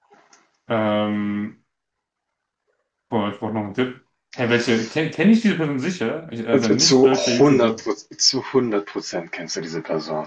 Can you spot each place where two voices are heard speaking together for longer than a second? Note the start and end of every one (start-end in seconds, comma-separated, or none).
6.5-7.8